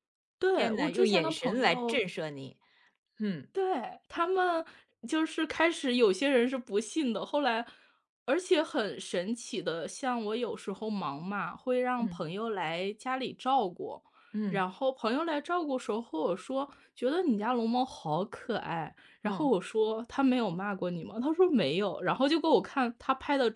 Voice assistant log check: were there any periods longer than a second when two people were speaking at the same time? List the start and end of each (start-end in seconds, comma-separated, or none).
0.5-2.0